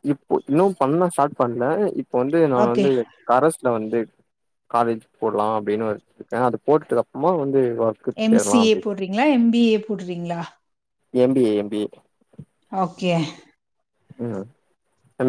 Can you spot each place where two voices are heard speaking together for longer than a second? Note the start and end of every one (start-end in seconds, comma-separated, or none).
none